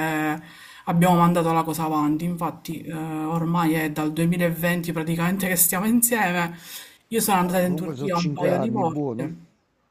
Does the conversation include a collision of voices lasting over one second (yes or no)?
yes